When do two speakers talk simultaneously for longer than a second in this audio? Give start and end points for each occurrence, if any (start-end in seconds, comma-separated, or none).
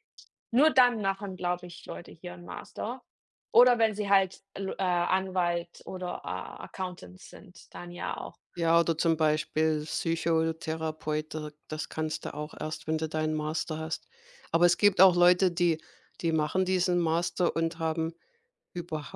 none